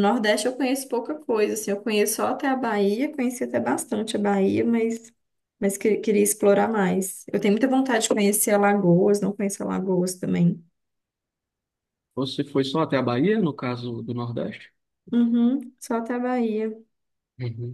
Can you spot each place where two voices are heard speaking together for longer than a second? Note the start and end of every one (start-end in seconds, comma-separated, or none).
none